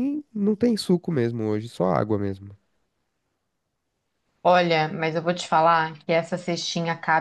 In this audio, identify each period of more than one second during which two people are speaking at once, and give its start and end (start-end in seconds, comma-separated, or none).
none